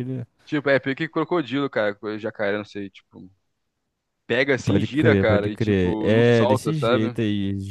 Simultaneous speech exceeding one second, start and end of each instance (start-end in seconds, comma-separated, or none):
4.6-7.2